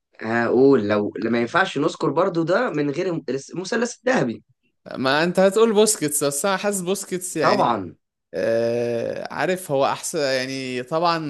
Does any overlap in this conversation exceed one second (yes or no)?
no